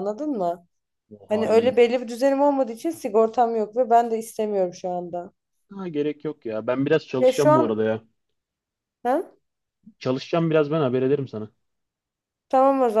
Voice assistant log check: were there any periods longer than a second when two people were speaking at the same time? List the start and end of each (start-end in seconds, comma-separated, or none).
none